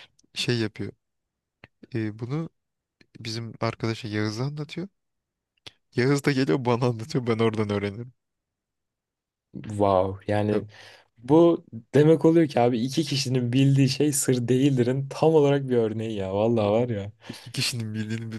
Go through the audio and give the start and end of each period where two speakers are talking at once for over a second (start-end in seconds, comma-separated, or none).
none